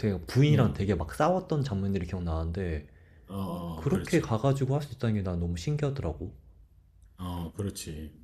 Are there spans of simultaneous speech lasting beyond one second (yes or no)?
no